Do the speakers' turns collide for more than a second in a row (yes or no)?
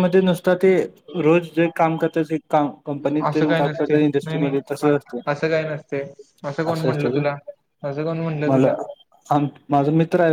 yes